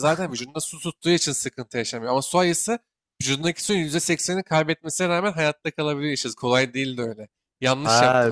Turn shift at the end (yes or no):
yes